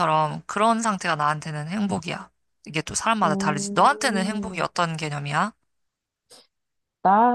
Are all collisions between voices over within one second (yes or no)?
no